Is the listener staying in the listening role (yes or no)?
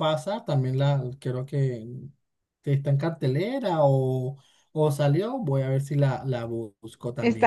no